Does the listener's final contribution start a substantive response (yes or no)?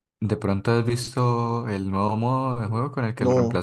yes